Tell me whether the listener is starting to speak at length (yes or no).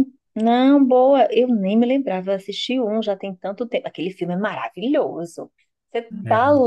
no